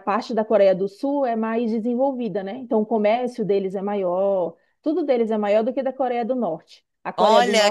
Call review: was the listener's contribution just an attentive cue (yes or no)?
no